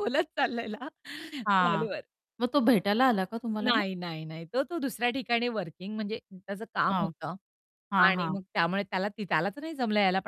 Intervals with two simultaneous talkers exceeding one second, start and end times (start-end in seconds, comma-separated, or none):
none